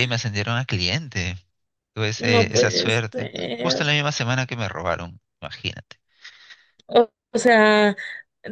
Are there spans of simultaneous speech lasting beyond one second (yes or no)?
yes